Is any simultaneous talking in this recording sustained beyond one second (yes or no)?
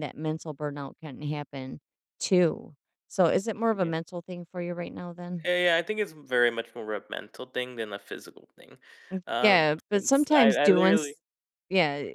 yes